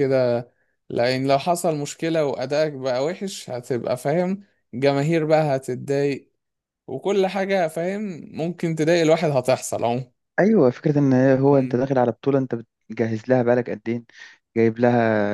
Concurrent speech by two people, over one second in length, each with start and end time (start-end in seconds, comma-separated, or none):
none